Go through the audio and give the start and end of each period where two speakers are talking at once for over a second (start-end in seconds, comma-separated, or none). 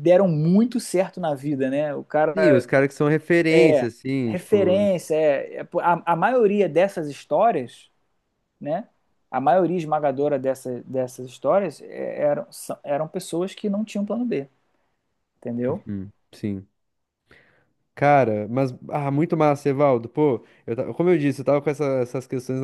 3.5-4.8